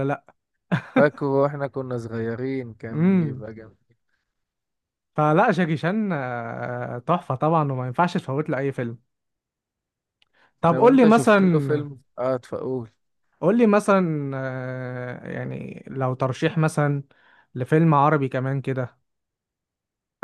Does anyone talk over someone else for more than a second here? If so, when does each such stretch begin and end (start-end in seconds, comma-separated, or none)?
10.7-11.9